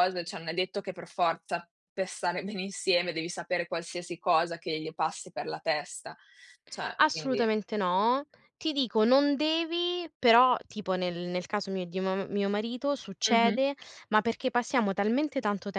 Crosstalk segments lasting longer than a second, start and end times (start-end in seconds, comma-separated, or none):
none